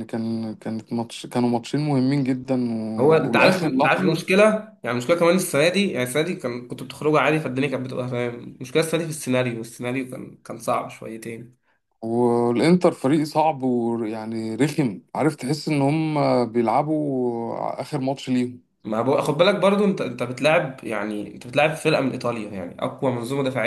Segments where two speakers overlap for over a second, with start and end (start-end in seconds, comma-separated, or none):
3.0-4.2